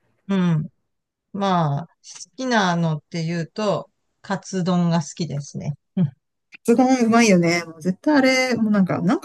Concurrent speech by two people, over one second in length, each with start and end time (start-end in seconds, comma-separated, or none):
none